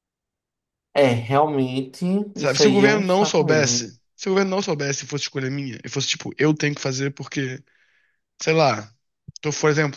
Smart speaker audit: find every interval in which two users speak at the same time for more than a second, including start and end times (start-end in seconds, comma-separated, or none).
2.3-4.0